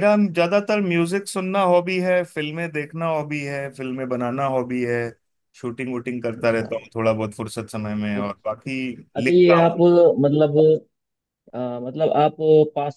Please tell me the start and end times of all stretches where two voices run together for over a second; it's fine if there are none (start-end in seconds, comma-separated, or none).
none